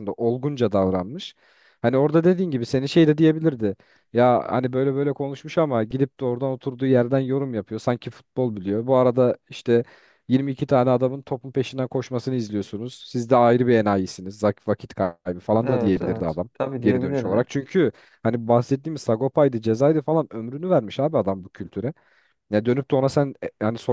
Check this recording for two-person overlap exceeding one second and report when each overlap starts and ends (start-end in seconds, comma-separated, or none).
15.6-17.5